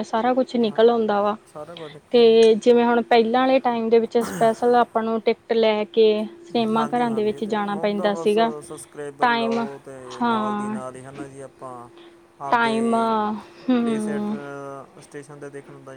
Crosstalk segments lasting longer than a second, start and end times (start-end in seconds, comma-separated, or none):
6.8-8.5